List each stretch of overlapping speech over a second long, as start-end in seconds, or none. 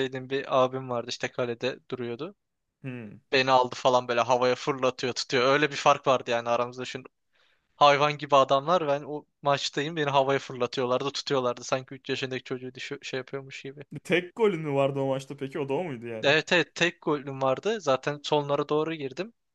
none